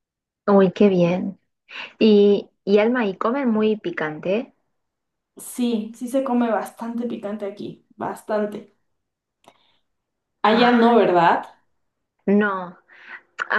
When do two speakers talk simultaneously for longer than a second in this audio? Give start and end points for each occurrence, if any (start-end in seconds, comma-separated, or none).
none